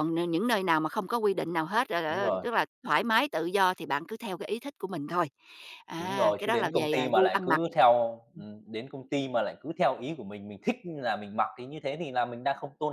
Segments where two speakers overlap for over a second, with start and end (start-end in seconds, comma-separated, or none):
6.0-7.6